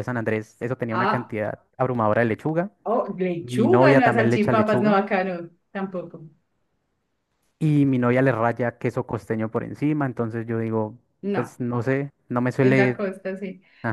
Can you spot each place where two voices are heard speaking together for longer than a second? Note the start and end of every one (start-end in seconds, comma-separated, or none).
3.4-5.0